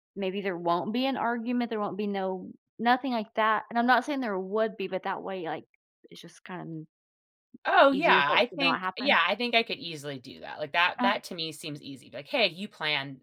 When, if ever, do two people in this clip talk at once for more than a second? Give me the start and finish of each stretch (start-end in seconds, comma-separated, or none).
7.9-9.2